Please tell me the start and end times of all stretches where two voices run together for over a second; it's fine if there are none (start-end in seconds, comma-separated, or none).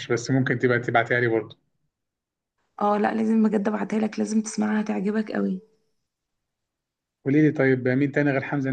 none